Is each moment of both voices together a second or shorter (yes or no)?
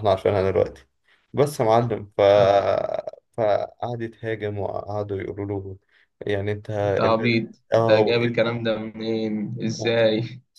no